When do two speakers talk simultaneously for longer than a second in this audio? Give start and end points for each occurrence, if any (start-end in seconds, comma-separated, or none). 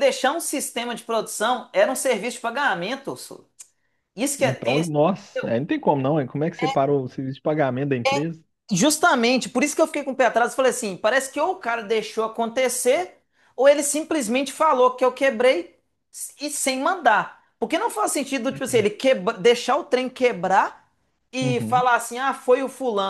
none